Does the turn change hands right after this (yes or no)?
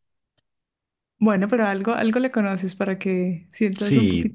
yes